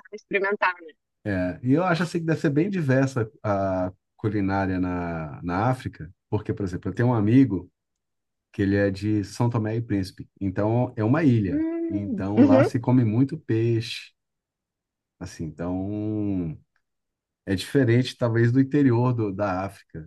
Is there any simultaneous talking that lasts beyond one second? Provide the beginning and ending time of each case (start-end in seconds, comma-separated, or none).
11.4-12.9